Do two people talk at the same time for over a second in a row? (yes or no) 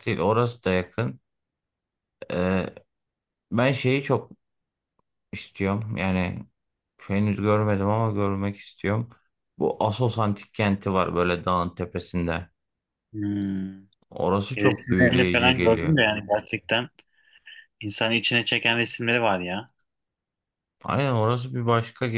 yes